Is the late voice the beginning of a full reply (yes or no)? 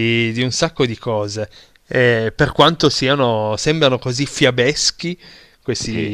no